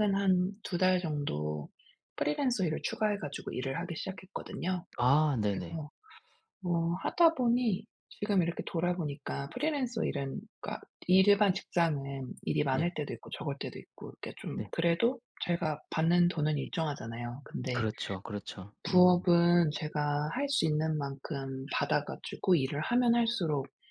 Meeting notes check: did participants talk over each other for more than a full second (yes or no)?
no